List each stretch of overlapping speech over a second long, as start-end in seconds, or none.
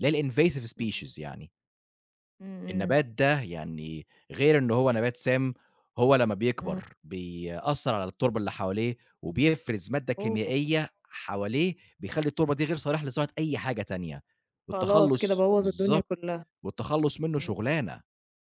14.7-16.4